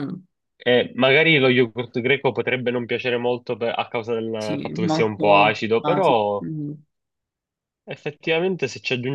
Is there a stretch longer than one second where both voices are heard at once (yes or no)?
yes